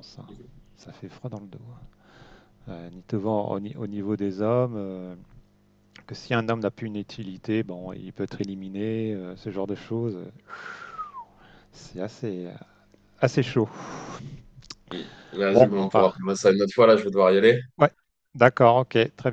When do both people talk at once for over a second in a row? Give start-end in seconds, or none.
none